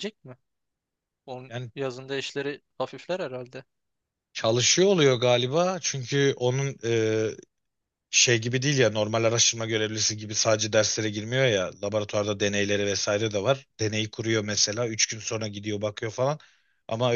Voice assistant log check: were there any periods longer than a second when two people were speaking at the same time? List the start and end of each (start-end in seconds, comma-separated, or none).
none